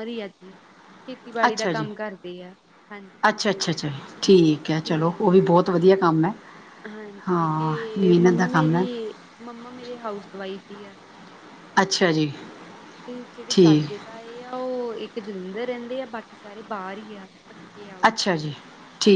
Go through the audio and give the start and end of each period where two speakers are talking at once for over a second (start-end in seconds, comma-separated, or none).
7.3-8.8